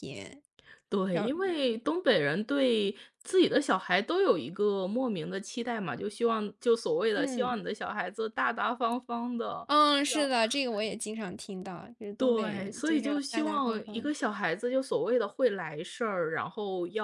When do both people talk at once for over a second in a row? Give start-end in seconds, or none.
12.2-14.2